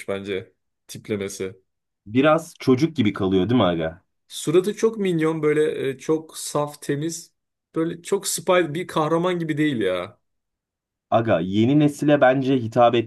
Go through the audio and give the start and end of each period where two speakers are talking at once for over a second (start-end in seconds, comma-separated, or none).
none